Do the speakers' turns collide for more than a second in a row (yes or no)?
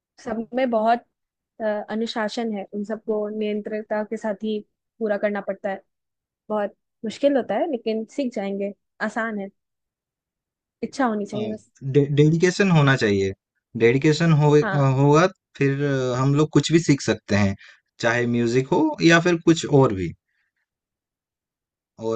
no